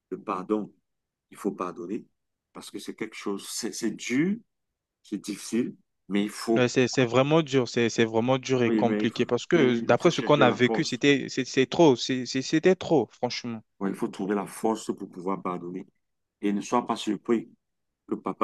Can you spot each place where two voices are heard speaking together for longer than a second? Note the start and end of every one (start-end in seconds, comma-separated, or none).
8.7-11.0